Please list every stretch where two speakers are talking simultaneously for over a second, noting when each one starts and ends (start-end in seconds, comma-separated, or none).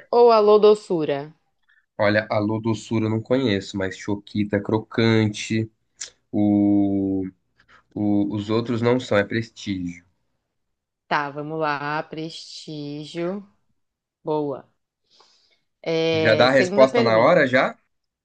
16.1-17.4